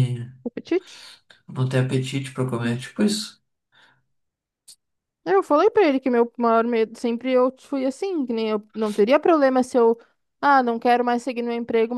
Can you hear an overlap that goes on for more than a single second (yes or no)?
no